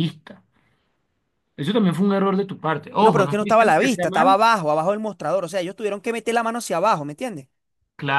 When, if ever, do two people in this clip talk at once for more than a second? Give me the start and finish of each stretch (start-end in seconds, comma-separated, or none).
3.0-4.4